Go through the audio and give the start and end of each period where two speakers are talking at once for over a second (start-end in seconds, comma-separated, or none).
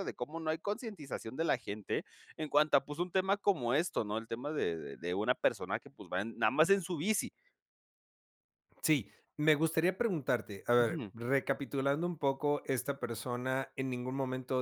none